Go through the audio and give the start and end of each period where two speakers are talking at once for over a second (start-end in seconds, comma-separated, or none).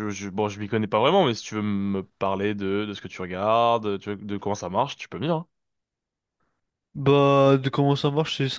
none